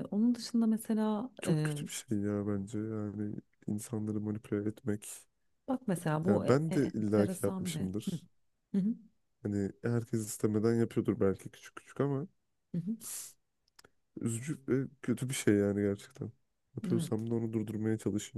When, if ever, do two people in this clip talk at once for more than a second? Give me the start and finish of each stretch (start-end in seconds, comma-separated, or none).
6.3-8.2